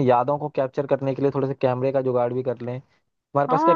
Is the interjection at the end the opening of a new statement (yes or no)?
yes